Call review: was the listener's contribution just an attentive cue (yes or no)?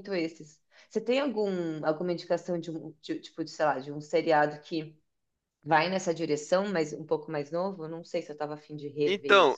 no